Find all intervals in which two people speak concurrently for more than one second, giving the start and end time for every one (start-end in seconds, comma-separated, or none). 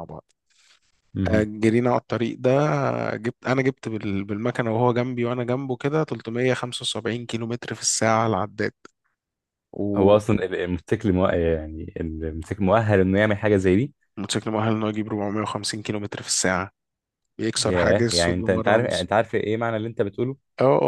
17.6-19.1